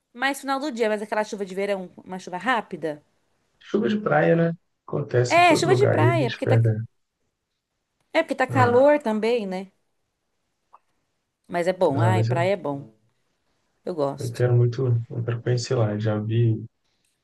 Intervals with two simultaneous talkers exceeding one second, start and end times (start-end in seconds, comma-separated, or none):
5.3-6.6